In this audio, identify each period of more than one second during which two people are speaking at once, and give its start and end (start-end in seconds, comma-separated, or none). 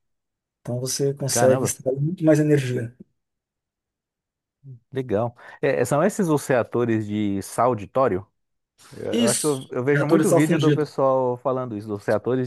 9.1-10.9